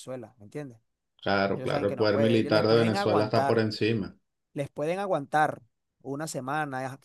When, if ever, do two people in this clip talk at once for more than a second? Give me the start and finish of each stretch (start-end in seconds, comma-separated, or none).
1.5-3.6